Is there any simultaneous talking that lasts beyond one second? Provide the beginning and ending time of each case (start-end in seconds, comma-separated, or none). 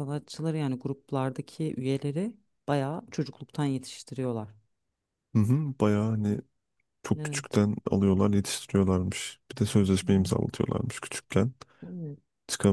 none